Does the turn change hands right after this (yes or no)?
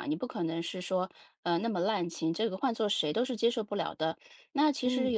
no